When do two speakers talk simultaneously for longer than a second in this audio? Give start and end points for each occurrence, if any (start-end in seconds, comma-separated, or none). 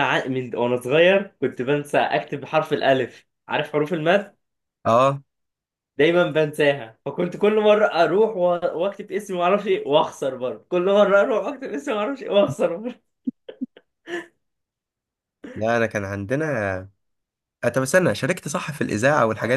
none